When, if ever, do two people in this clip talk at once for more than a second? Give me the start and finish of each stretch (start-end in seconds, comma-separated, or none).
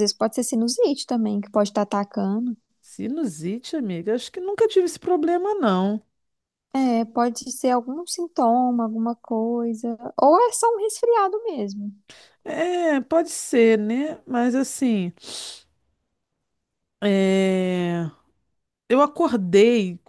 none